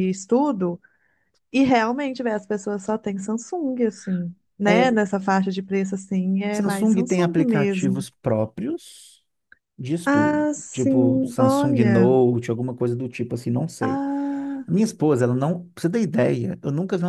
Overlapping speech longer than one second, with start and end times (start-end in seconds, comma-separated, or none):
6.5-8.1, 10.1-12.2